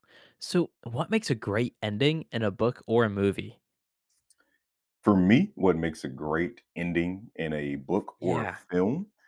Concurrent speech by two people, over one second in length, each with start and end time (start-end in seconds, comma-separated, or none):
none